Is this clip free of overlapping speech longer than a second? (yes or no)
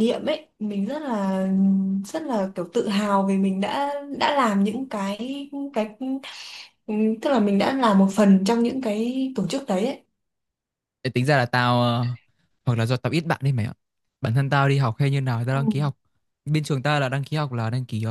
yes